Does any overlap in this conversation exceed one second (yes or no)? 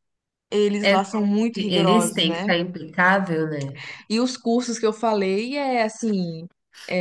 yes